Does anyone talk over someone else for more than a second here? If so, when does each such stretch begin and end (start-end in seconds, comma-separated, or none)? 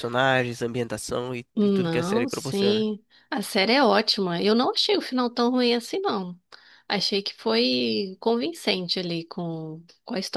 1.5-2.8